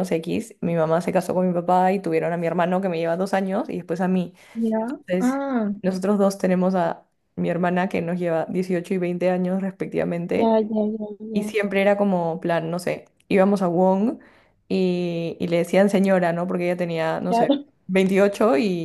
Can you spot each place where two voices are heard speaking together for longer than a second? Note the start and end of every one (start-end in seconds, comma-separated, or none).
none